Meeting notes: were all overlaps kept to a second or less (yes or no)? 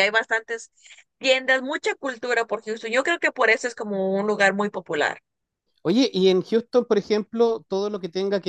yes